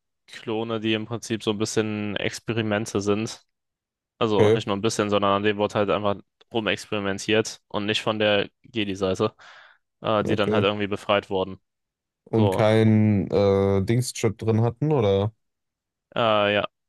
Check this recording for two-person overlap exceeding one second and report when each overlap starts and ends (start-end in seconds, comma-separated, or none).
none